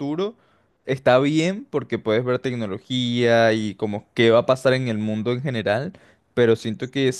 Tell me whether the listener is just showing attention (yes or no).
yes